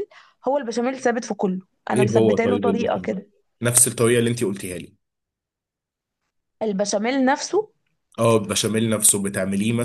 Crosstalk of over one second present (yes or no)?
yes